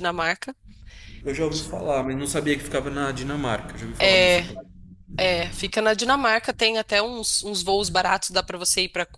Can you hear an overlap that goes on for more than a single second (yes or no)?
no